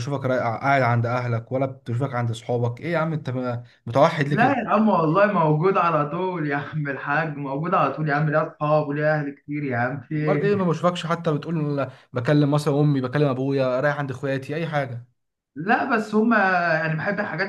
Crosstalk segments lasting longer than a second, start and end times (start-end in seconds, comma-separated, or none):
none